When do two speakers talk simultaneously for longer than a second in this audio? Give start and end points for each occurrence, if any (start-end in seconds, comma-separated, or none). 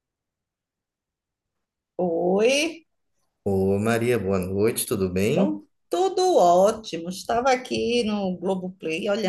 none